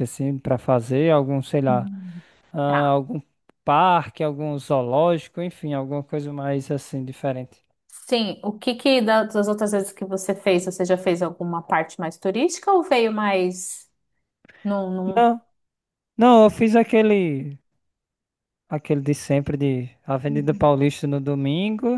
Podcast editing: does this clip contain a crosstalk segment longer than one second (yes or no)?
no